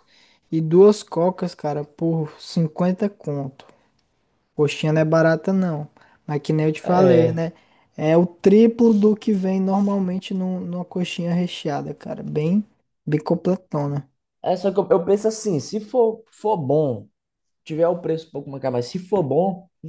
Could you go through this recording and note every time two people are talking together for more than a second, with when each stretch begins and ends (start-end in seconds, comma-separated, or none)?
none